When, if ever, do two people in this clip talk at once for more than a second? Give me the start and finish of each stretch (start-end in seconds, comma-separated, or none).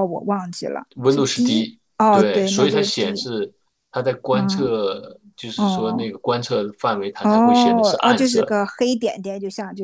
1.0-3.2, 7.2-8.5